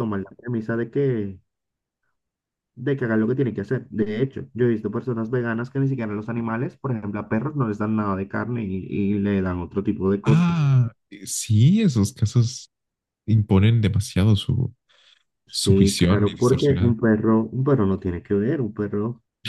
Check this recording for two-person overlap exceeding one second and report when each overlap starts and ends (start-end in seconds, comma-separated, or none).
15.5-17.0